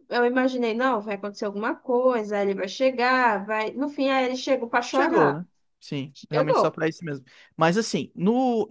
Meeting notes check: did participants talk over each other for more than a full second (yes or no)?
no